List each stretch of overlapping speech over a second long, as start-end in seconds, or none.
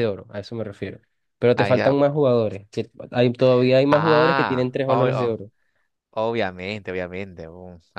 3.9-5.4